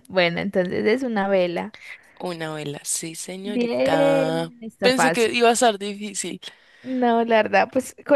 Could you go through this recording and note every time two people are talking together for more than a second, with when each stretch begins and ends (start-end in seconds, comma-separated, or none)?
3.4-5.4